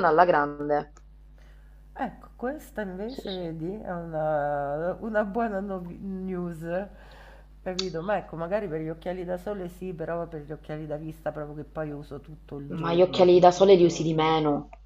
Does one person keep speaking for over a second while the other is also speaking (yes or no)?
yes